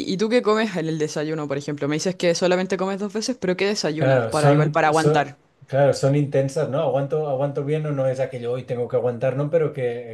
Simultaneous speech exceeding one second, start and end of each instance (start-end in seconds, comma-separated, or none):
4.0-5.4